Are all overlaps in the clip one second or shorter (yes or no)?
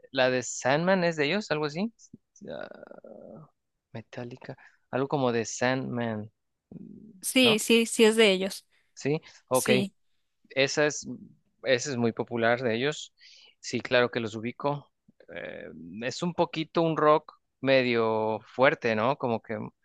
yes